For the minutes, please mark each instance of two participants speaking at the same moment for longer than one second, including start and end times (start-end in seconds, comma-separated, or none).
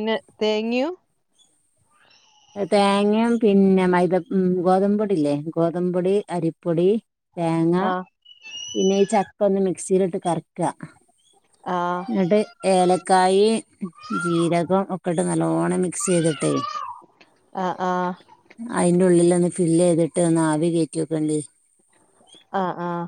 none